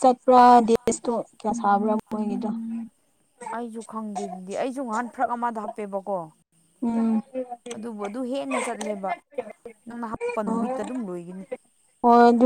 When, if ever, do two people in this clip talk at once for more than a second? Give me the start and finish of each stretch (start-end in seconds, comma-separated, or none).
none